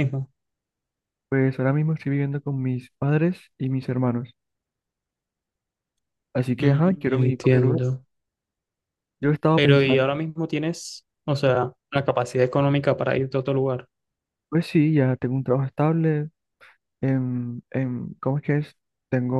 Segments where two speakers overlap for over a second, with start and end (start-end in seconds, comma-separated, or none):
6.6-7.8